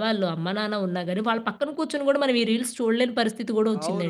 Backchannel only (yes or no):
no